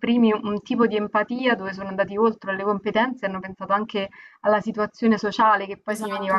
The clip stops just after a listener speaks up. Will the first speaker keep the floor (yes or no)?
no